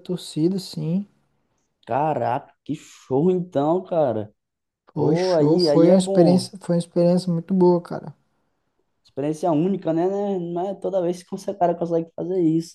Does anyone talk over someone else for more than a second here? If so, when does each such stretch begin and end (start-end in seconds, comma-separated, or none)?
4.9-6.5